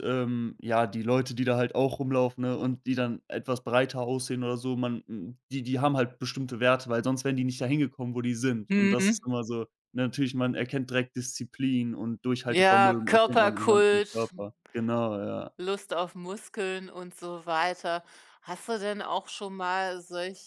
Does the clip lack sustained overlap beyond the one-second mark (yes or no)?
no